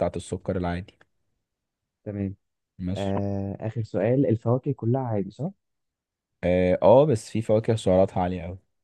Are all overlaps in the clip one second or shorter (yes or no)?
yes